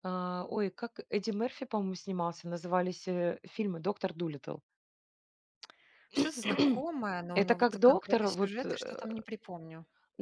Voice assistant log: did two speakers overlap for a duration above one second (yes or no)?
yes